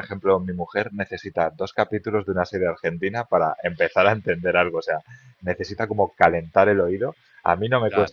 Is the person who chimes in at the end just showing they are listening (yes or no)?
yes